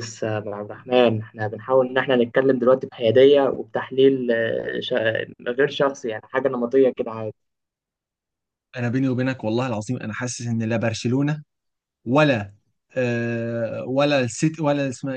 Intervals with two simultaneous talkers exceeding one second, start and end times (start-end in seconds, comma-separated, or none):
none